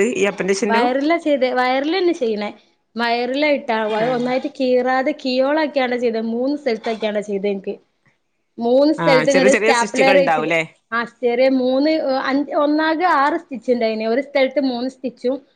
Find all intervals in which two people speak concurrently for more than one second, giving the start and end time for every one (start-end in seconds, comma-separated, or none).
9.1-10.5